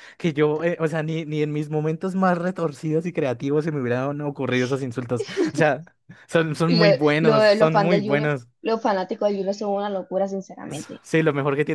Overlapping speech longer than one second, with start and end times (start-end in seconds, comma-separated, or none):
6.7-8.5